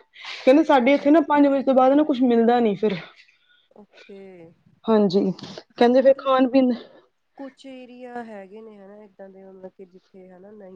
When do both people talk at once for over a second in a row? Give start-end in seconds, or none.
none